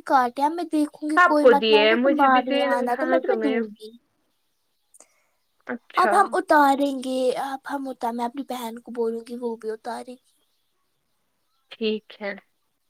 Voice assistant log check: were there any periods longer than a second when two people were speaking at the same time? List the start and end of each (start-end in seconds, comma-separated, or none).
1.2-3.6